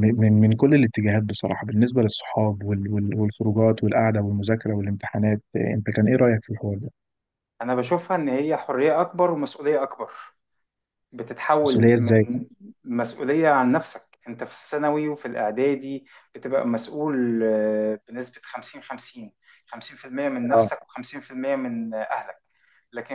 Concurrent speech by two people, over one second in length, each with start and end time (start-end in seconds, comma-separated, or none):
none